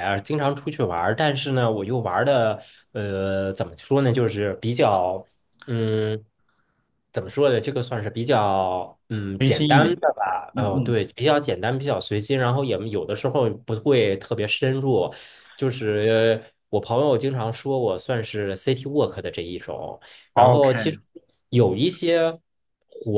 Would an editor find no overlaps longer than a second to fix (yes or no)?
yes